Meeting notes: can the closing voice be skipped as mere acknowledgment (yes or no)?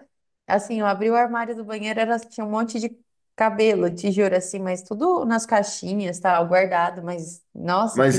no